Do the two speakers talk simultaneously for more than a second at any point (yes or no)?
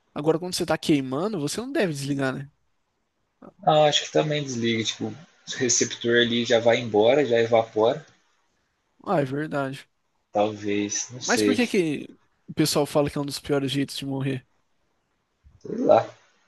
no